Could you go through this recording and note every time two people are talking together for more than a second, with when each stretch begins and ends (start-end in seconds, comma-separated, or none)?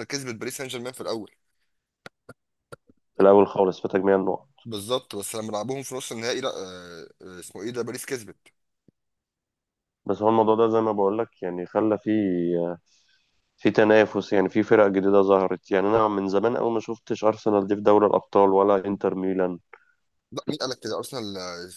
none